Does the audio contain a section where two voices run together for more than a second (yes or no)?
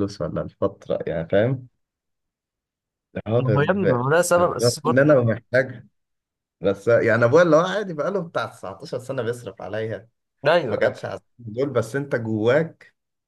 yes